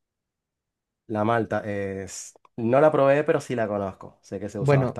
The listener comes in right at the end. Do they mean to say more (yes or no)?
yes